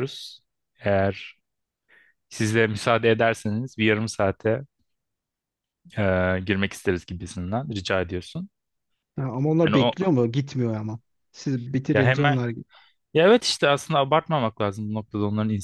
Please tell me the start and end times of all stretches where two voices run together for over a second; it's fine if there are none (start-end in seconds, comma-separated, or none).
none